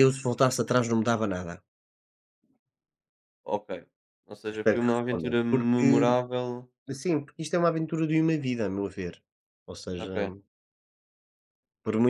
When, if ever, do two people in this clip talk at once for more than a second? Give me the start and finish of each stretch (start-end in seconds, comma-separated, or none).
4.5-5.9